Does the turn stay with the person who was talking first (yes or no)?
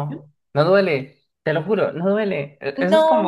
yes